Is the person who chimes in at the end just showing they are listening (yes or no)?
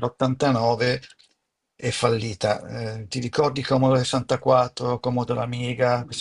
no